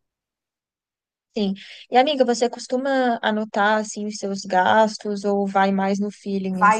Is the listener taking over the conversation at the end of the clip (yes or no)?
yes